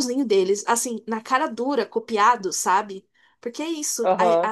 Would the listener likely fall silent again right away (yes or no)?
yes